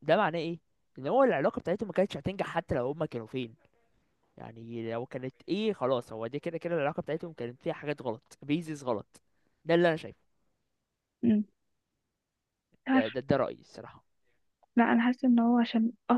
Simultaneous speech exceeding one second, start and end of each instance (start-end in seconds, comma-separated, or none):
none